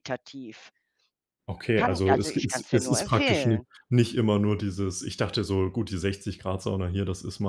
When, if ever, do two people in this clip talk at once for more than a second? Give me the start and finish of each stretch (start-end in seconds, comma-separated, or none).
1.8-3.6